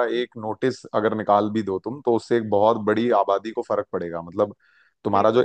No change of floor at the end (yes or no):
yes